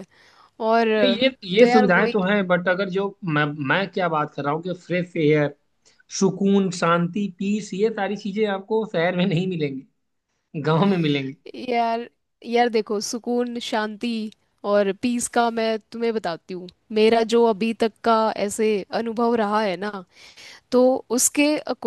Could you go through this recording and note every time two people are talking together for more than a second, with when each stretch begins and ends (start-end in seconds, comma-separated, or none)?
none